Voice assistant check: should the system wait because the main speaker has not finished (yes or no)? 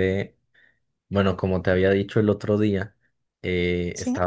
yes